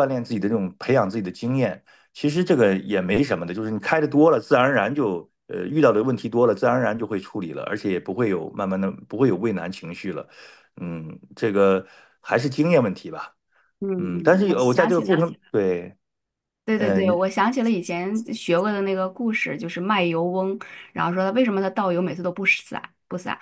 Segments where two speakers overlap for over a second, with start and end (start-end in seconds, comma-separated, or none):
14.0-15.3